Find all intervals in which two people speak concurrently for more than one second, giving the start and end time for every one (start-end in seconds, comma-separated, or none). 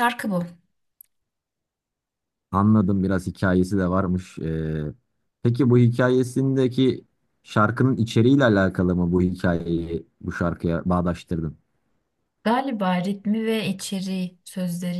none